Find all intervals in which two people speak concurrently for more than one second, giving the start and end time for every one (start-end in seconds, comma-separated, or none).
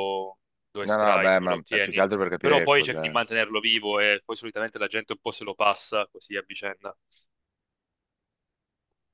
0.9-3.2